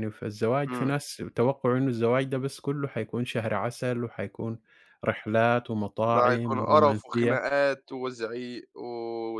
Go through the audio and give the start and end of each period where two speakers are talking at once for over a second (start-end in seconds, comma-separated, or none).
6.1-7.5